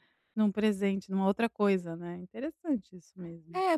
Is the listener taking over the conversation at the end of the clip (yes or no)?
yes